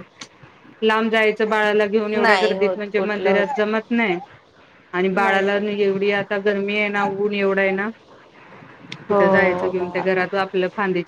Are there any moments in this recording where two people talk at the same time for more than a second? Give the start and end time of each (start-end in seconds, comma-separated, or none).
2.2-3.6